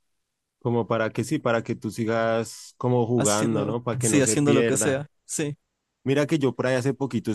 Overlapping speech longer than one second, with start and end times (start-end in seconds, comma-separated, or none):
3.2-5.0